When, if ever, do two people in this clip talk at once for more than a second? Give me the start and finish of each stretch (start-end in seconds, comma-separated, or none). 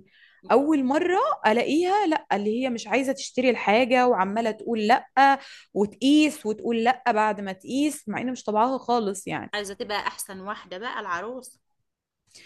none